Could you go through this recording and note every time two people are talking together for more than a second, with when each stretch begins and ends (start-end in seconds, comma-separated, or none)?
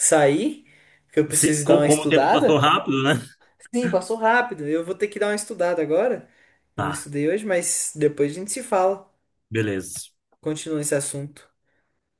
1.4-2.7